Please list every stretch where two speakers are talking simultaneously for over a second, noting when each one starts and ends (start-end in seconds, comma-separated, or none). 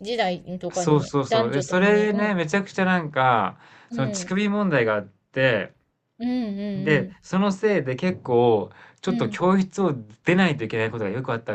0.7-2.4